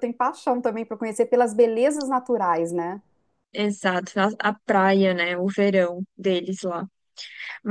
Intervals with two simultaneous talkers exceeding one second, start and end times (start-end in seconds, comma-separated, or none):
none